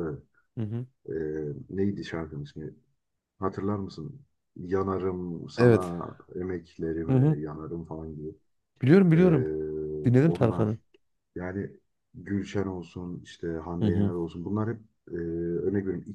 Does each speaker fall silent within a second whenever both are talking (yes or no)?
yes